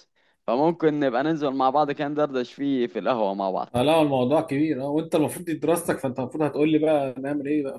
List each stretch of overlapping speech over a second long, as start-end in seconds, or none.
none